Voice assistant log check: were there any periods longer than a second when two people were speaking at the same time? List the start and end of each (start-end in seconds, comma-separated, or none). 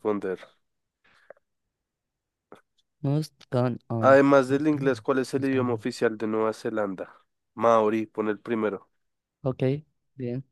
4.0-5.8